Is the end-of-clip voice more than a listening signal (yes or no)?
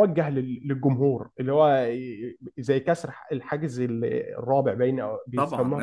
yes